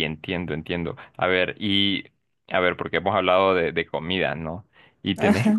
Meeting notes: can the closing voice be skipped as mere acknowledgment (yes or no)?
yes